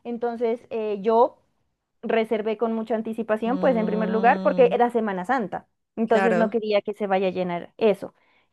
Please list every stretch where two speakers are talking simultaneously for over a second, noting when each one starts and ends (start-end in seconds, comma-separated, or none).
3.5-4.8